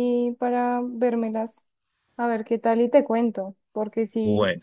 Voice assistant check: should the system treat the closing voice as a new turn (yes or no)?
no